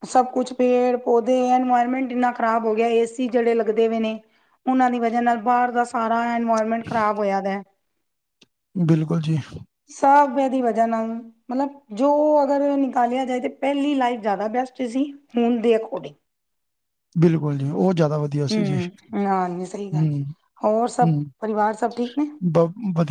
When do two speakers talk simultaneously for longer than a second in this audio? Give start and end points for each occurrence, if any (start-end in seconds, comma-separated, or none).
18.5-20.1